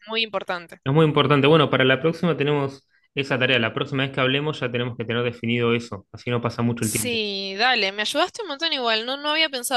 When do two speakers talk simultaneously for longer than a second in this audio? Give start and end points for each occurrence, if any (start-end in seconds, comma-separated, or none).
none